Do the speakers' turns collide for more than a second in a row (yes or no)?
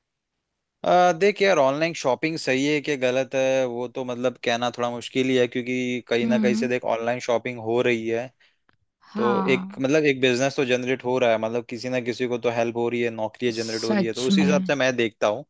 yes